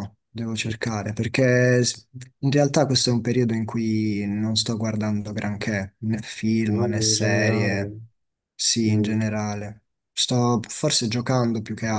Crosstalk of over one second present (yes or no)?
yes